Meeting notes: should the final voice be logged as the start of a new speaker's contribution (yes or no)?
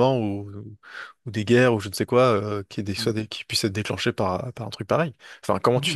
no